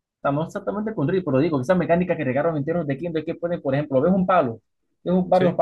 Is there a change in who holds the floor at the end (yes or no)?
no